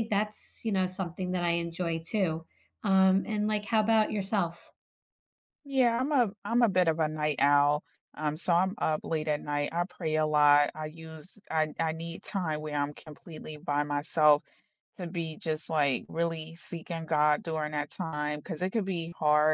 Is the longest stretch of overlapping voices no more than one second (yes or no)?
yes